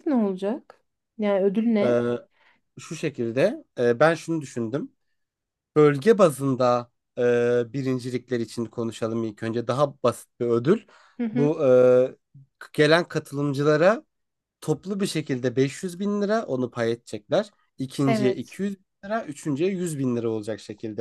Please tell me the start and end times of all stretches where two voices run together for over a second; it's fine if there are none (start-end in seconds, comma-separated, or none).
none